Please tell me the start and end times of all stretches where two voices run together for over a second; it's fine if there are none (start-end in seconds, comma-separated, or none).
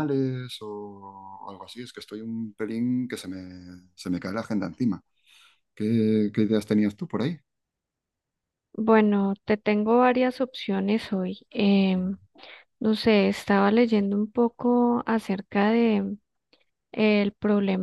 none